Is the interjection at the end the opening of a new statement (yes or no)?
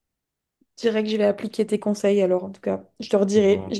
no